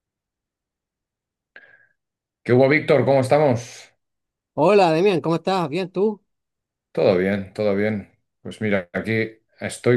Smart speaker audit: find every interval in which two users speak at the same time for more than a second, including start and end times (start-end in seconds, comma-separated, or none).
none